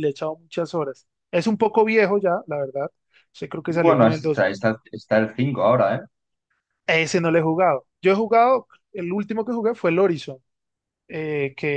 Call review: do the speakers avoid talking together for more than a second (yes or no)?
yes